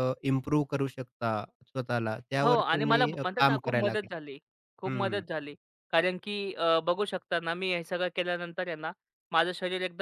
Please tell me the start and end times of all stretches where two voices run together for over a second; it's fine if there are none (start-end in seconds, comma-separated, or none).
2.4-4.2